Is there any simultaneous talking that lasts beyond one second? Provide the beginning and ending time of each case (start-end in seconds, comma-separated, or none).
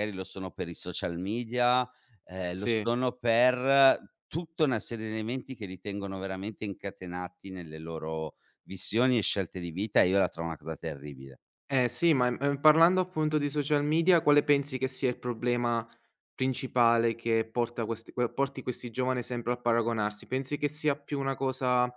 none